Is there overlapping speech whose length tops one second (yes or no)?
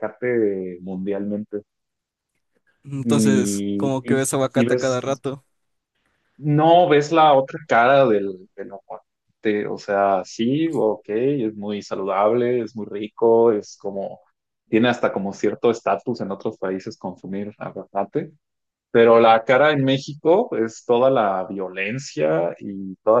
yes